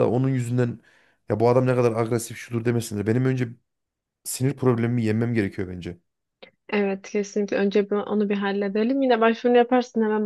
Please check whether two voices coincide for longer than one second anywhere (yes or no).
no